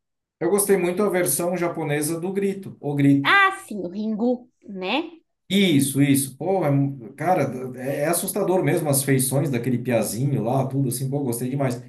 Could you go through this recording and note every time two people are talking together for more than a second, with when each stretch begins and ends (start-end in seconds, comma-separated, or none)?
none